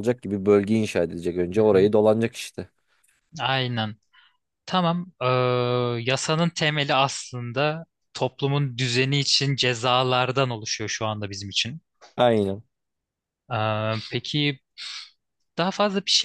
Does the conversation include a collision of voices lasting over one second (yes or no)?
no